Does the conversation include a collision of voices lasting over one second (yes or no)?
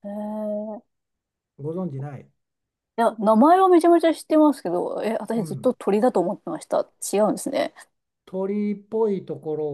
no